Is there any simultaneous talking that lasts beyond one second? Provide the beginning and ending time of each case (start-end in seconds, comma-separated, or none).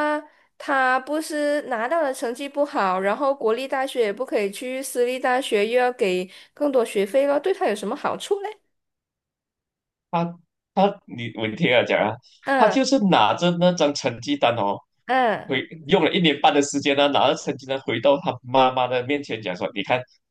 none